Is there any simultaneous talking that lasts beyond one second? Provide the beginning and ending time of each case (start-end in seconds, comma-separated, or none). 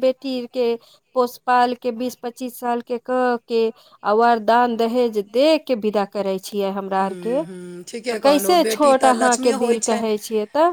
8.1-10.0